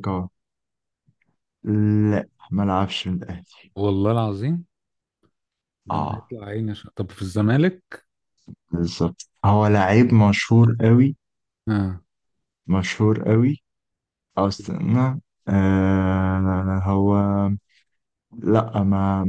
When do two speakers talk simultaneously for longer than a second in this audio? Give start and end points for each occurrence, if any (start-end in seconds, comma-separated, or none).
none